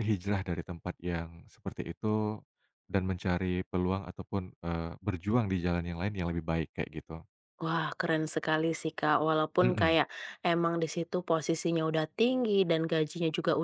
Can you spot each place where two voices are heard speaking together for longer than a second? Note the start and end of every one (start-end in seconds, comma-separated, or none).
none